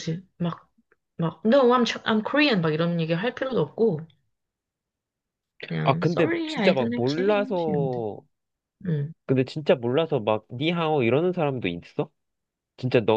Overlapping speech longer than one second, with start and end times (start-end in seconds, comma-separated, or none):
5.8-8.0